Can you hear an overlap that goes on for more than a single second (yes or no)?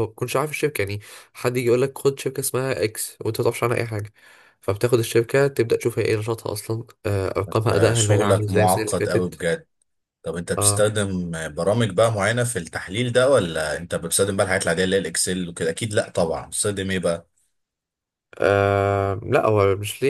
yes